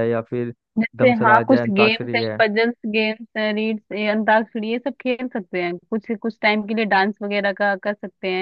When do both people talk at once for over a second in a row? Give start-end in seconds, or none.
0.9-2.4